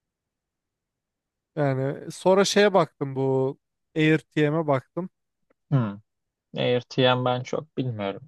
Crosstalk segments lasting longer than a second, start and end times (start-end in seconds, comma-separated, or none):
none